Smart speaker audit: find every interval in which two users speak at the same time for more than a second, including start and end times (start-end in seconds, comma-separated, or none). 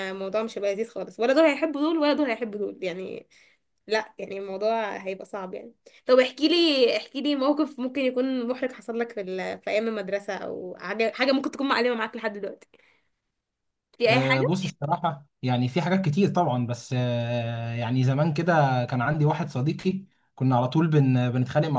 none